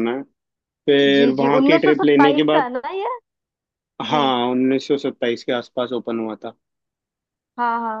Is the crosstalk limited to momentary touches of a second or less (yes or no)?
no